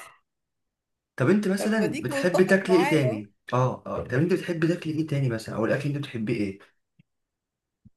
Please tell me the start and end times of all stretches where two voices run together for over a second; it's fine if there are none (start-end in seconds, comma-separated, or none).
1.6-3.2